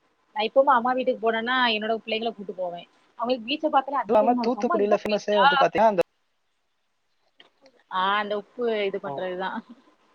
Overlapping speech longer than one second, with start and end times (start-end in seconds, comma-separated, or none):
4.1-5.5